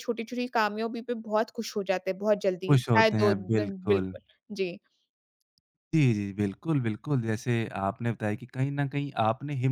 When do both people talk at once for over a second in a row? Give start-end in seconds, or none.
2.7-4.2